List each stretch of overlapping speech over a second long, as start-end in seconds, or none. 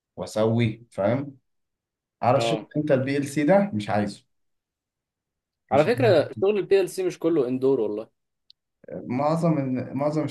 none